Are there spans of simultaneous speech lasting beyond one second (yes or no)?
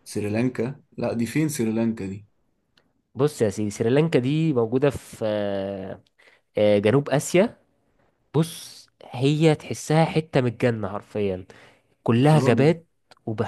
no